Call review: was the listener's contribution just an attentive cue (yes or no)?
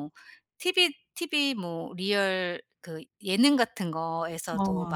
yes